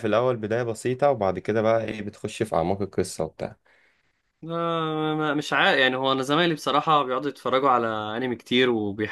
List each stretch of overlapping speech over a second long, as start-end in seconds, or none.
none